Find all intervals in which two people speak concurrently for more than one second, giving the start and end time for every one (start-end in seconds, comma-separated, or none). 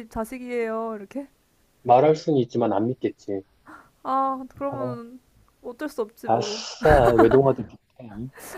none